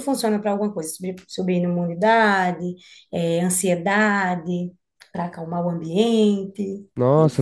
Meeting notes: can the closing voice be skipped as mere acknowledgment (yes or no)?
no